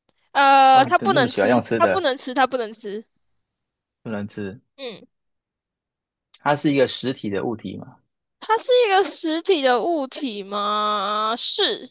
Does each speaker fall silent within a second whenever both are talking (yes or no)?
no